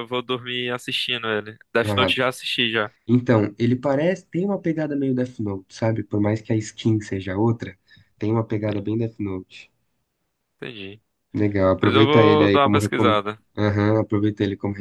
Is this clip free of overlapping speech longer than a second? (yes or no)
no